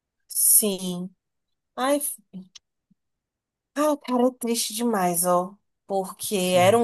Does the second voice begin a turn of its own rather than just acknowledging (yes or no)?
no